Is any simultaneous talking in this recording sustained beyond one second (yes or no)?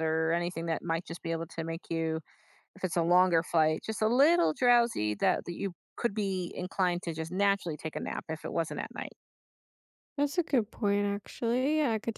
no